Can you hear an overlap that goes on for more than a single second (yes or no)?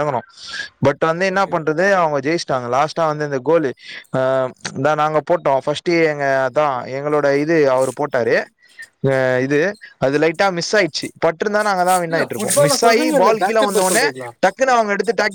yes